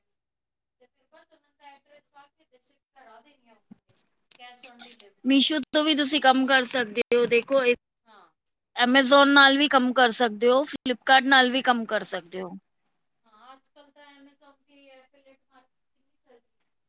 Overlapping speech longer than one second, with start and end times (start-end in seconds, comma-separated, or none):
none